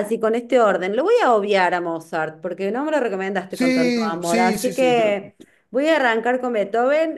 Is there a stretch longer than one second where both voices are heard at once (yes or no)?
yes